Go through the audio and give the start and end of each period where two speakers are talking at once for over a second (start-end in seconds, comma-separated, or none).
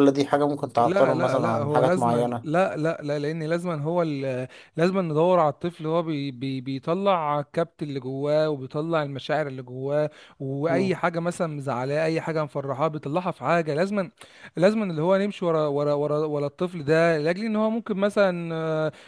0.9-2.6